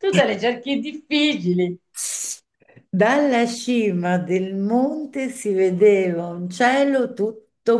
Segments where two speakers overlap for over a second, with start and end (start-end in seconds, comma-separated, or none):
none